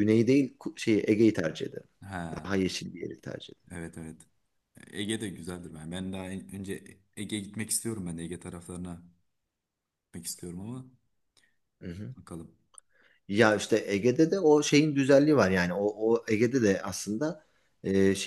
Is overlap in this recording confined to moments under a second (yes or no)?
yes